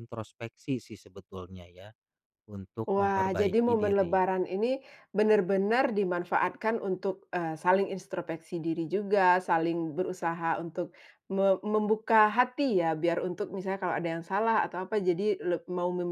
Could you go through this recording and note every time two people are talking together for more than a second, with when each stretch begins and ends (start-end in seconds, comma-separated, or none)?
2.9-4.2